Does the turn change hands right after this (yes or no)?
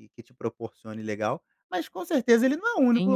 yes